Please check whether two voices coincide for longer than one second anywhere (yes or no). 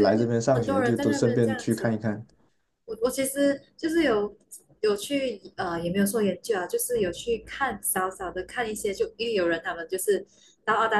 yes